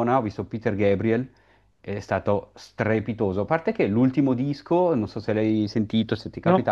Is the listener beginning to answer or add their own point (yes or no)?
no